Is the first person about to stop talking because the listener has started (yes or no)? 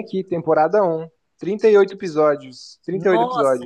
yes